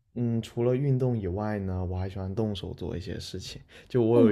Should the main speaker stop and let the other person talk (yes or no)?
no